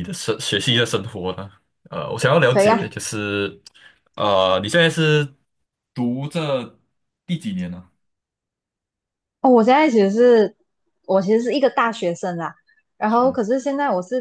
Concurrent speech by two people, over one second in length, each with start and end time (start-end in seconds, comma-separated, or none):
none